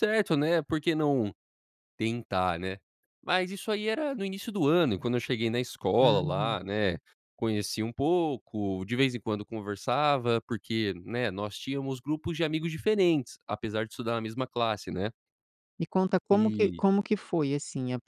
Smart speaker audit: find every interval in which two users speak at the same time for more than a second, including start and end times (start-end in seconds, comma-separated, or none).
none